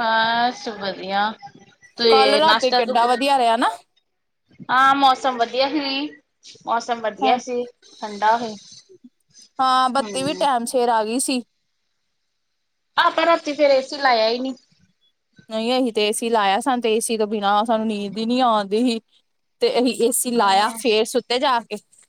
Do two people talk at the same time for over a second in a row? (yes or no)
yes